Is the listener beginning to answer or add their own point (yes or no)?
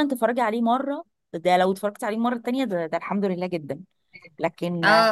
no